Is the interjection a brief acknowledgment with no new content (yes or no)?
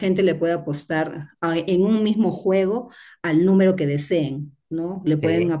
yes